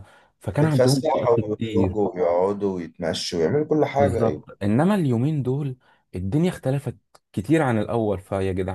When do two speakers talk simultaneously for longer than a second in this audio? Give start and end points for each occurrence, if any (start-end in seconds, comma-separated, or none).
0.6-2.0